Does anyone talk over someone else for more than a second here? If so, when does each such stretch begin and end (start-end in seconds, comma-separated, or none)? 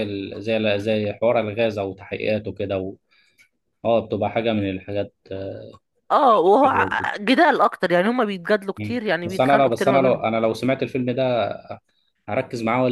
8.8-10.2